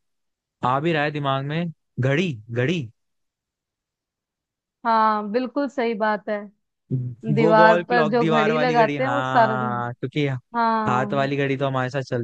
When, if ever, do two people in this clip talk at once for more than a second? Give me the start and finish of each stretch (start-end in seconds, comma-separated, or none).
7.4-9.7